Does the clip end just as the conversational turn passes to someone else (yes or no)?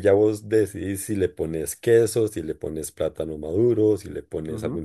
yes